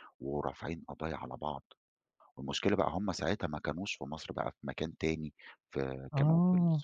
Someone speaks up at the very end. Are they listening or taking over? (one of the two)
listening